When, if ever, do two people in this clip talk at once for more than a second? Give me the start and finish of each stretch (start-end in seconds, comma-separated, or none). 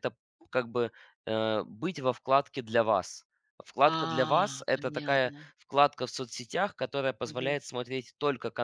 3.8-5.5